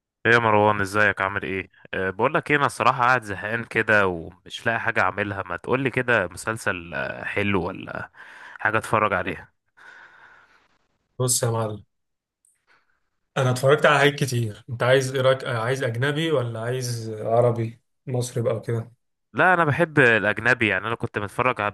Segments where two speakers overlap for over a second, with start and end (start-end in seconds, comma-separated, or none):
none